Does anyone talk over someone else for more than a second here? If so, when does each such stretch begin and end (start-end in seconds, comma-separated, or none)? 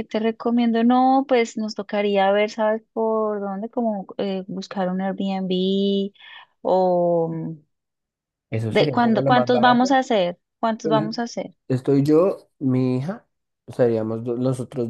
8.7-9.9